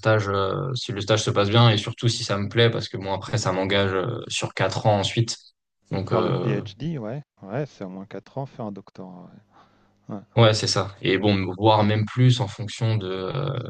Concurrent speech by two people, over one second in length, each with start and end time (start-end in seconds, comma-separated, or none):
none